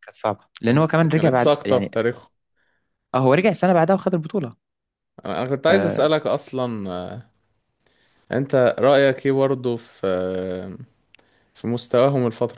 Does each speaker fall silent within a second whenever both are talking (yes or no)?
no